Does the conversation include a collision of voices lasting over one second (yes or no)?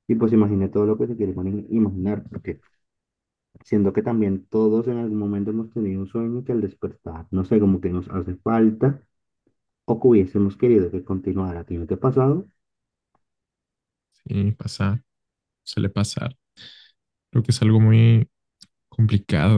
no